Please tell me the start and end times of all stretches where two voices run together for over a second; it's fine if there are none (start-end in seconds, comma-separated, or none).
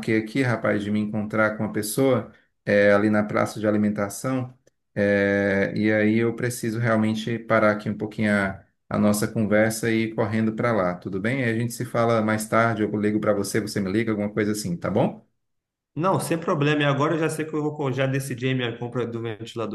none